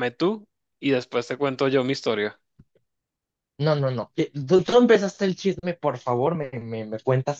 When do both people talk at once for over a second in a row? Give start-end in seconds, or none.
none